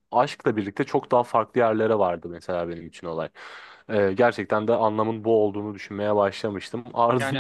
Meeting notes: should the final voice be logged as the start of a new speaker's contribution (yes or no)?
yes